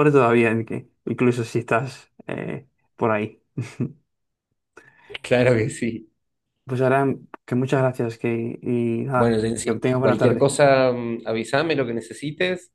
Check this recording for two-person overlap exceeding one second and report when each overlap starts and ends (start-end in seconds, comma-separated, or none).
9.1-10.5